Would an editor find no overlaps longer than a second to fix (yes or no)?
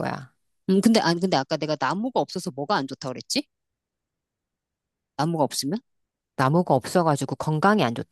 yes